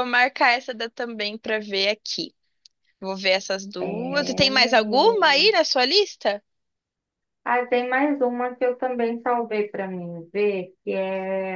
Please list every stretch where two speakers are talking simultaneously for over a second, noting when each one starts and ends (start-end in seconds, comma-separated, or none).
3.8-5.5